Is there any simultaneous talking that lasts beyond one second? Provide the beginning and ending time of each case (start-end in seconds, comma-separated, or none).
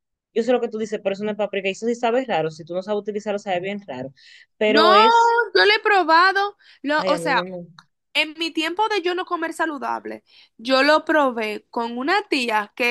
none